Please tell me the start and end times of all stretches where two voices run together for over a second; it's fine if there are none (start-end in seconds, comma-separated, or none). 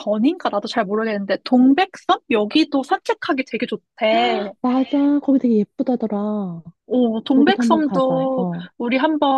7.3-8.6